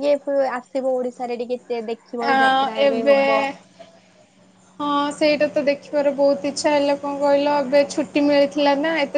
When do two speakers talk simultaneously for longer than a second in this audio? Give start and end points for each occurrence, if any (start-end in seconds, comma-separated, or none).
none